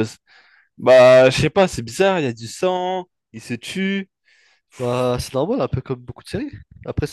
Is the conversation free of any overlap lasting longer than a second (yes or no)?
yes